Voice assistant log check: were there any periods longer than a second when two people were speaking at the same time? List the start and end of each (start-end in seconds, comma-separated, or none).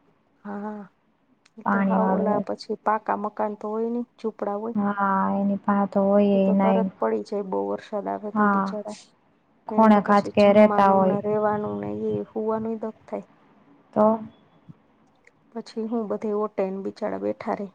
9.7-11.2